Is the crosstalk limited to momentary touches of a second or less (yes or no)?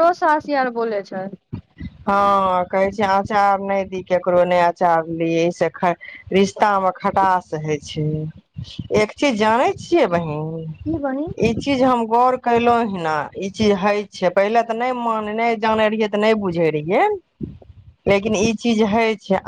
yes